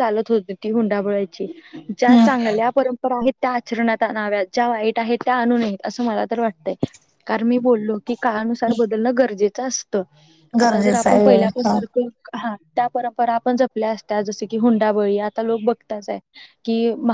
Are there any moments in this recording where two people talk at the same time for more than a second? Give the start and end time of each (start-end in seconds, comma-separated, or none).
10.6-11.9